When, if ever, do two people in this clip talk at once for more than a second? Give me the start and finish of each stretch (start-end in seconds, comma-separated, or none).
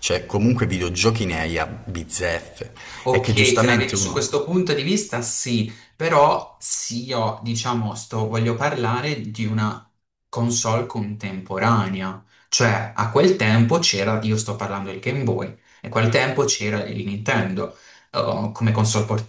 3.0-4.3